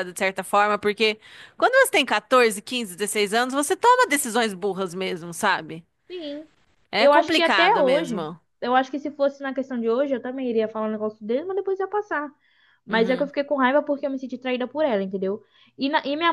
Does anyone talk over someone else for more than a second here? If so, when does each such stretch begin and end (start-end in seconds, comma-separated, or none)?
7.0-8.4